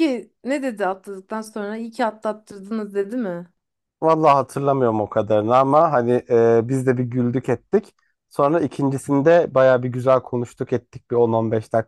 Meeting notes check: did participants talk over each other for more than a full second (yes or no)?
no